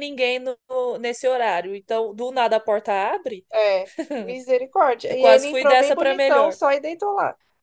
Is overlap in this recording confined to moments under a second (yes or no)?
no